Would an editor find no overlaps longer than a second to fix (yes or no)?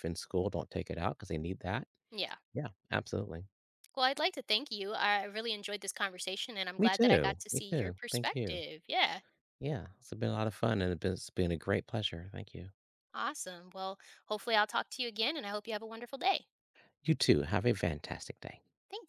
no